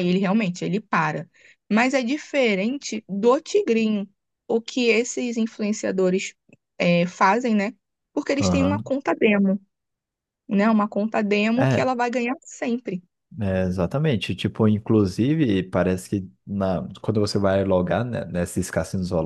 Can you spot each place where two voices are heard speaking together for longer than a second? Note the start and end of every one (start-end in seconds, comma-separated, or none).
none